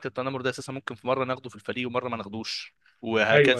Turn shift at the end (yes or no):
no